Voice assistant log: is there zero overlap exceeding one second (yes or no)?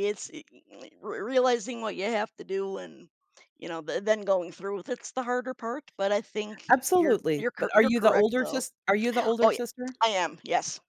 no